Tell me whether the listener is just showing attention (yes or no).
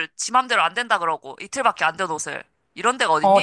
no